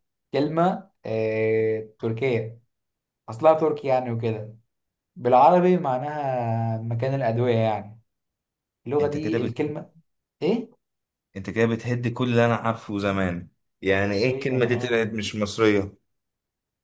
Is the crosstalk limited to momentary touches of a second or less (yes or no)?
no